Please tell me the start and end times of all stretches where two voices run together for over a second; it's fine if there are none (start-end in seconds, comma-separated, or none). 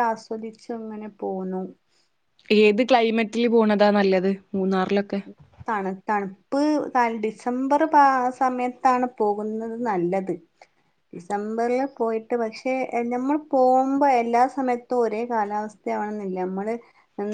none